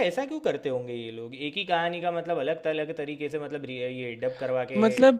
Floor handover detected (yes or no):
yes